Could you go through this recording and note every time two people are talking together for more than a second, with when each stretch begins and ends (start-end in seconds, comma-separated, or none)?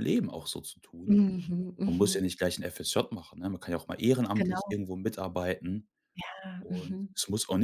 none